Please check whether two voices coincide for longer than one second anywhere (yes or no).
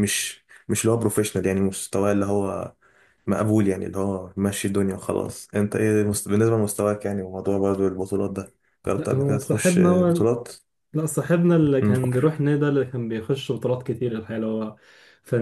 yes